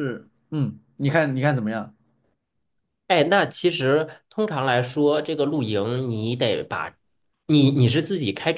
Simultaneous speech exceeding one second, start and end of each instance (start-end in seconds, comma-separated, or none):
none